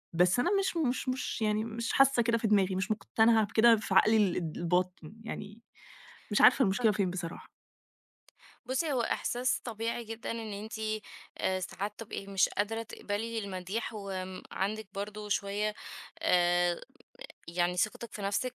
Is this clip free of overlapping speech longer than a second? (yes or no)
yes